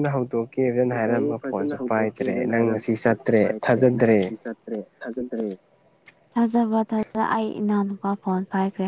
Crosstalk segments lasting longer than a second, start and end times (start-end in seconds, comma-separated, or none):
2.8-4.3